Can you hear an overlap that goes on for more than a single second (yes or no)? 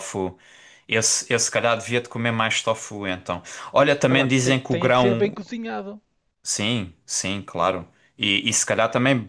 yes